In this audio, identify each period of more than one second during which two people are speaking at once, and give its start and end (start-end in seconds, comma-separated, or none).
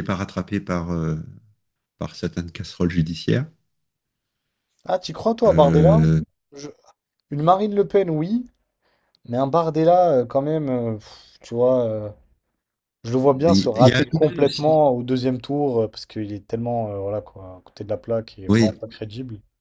13.2-14.9